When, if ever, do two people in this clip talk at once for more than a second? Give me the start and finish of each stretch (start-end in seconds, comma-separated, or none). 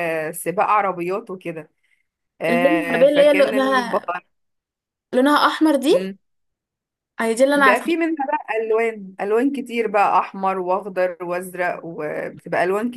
2.5-4.1